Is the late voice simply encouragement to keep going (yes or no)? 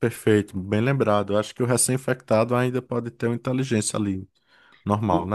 no